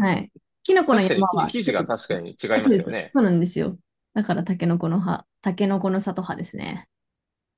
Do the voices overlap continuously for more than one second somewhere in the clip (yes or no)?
yes